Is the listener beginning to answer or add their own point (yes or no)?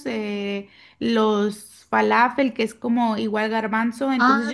yes